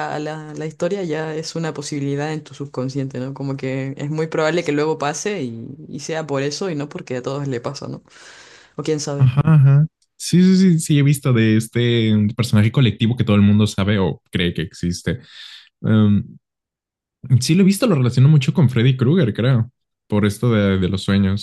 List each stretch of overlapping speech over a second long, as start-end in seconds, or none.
none